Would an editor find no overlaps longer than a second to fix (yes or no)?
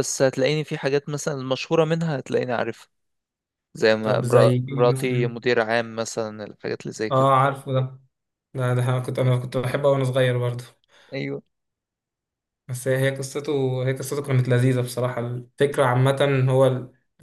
no